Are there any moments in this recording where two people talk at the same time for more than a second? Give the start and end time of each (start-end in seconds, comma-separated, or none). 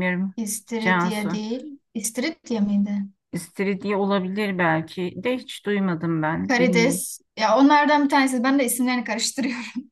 none